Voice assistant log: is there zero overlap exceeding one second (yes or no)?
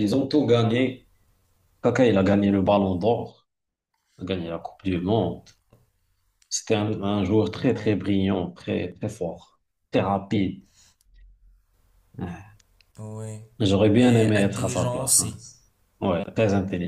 no